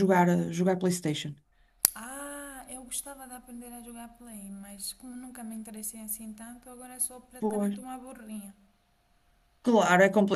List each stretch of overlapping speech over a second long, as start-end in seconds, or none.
none